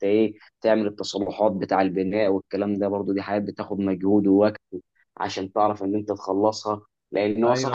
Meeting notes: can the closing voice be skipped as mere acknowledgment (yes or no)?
yes